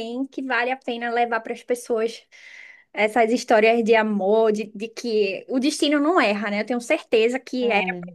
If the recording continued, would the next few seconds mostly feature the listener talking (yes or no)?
no